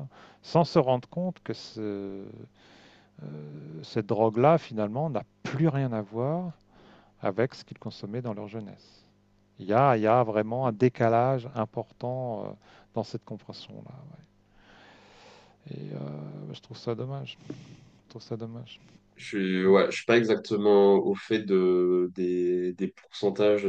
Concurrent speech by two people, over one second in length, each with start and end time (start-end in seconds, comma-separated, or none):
none